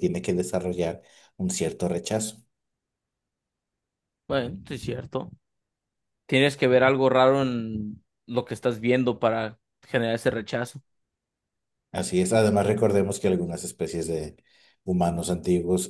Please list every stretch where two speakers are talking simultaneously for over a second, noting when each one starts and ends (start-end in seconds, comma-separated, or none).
none